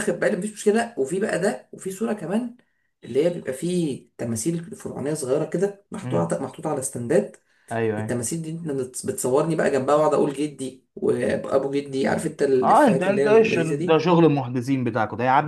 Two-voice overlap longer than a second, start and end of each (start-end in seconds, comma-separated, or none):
12.6-14.1